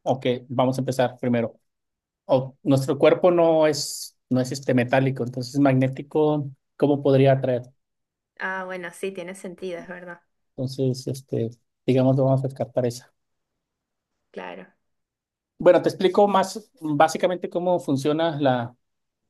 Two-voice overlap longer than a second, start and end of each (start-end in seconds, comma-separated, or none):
none